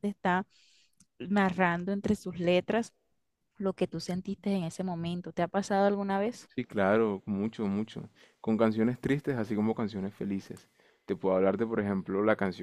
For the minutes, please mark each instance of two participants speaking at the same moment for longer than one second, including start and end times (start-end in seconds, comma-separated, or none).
none